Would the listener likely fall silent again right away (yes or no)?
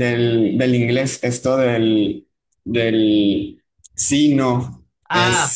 no